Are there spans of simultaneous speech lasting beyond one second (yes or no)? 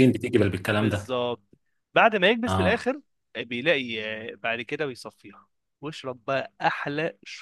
no